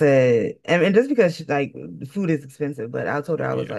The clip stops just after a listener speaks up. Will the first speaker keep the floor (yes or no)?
yes